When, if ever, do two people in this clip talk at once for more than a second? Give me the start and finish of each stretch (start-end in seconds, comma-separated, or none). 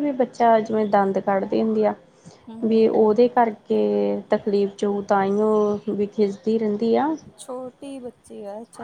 none